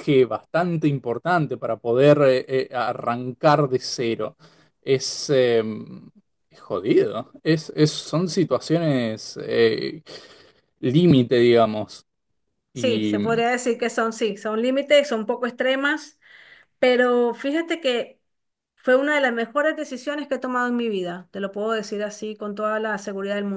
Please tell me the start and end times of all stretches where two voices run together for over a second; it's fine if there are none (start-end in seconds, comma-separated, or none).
none